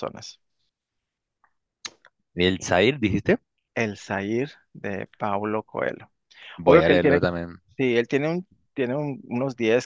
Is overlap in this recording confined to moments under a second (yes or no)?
yes